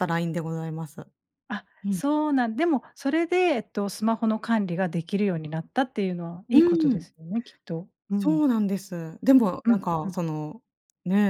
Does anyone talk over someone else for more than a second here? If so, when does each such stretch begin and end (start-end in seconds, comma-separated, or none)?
none